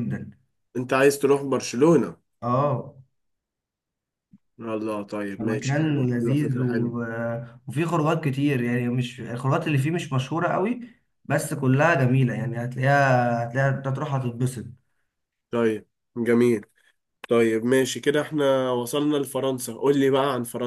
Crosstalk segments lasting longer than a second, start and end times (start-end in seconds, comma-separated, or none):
5.4-7.0